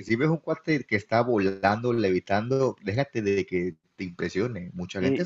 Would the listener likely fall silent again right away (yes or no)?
yes